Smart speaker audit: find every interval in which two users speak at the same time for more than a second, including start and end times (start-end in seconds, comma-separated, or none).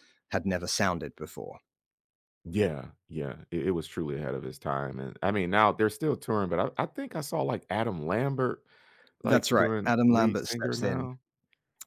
9.2-11.1